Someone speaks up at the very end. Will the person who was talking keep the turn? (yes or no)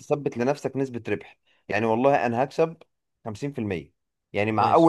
yes